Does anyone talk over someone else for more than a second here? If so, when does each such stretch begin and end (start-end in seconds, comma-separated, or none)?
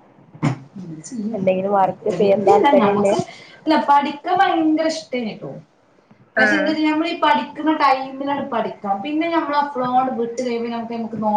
1.4-3.1